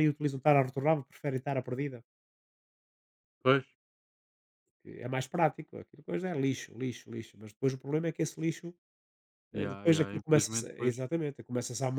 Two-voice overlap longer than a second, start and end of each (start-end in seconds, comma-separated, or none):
9.5-11.0